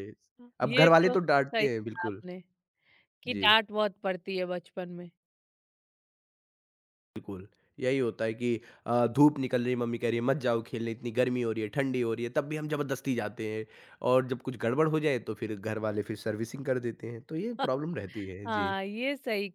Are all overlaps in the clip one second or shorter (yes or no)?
no